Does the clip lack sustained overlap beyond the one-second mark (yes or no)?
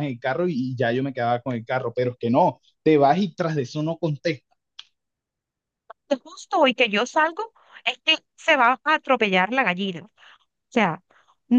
yes